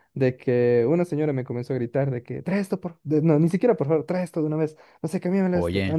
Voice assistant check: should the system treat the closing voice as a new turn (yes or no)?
no